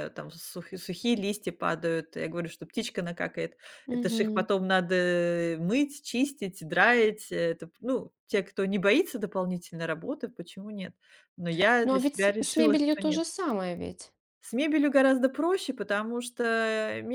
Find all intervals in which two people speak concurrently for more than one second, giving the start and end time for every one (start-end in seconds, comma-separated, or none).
11.8-13.2